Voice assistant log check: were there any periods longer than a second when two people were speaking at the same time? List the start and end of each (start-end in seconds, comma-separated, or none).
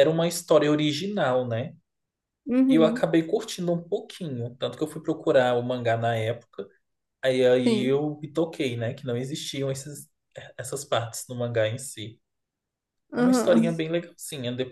none